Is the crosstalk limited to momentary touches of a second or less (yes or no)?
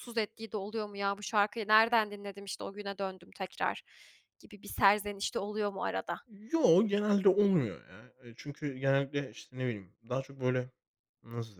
yes